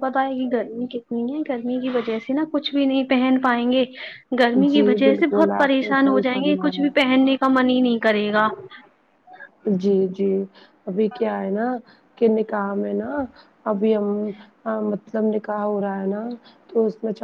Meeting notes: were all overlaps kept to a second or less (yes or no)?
no